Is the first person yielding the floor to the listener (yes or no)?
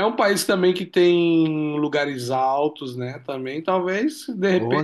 no